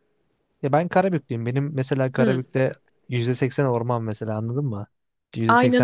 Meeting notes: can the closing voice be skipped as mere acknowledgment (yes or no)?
no